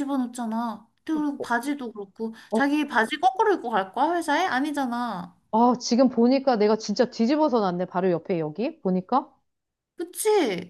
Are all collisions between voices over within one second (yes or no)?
yes